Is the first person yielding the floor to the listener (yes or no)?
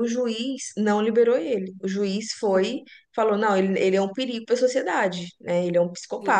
no